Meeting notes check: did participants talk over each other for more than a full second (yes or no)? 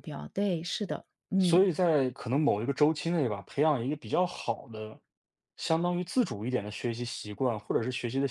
no